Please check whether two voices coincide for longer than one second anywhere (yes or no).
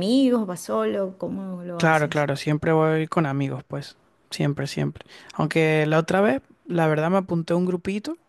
no